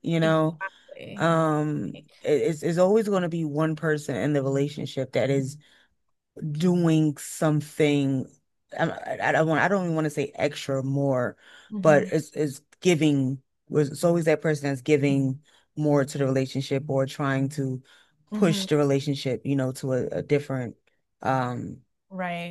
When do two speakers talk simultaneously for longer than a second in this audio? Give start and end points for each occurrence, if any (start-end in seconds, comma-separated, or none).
none